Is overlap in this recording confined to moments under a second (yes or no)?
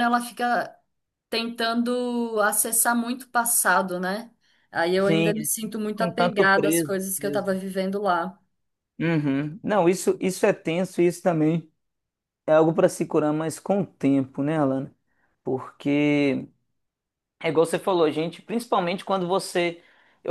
no